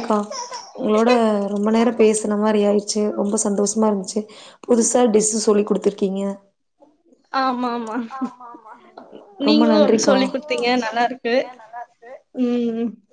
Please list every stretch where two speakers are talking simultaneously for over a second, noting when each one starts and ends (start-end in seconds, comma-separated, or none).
9.5-11.3